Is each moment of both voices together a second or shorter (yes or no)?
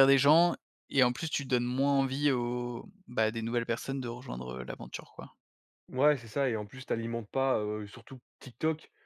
yes